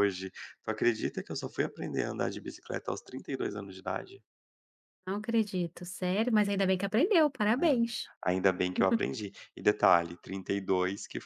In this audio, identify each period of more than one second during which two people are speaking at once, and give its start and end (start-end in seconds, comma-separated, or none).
none